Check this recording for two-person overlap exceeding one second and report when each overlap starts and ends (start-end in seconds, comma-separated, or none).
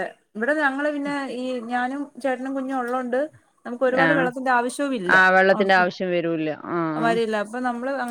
5.5-7.1